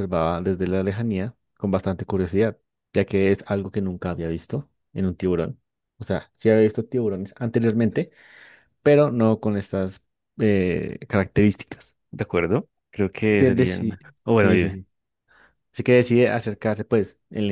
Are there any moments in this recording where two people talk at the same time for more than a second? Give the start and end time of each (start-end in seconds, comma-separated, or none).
13.3-14.8